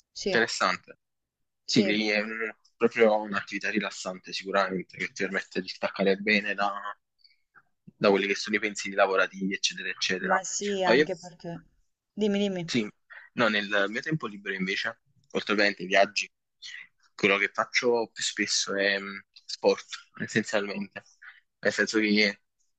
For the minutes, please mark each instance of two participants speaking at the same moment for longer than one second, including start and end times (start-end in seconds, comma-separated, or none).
none